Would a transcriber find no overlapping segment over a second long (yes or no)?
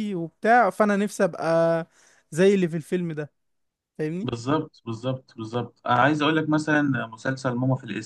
yes